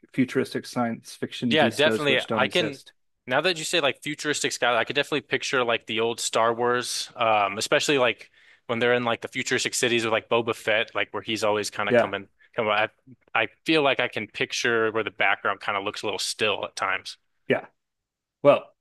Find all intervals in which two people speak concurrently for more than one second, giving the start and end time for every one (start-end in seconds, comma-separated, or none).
1.5-2.8